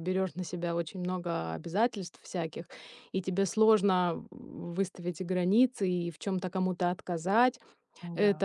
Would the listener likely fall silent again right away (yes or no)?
yes